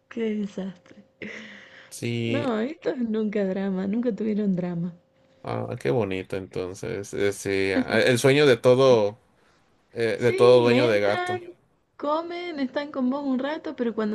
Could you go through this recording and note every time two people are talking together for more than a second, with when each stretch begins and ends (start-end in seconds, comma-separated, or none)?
10.1-11.4